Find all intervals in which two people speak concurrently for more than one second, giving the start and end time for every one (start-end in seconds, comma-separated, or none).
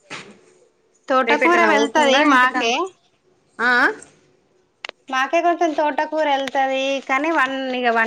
1.3-2.7